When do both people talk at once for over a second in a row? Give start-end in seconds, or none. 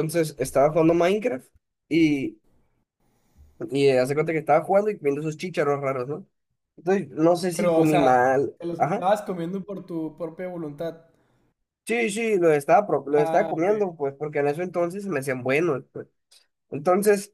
7.5-9.1